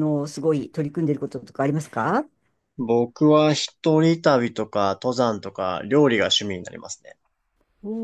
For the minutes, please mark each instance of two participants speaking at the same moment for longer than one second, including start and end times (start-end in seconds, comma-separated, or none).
none